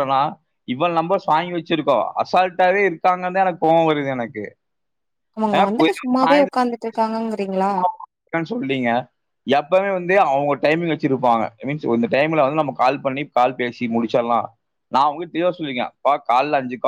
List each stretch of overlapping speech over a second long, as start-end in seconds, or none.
none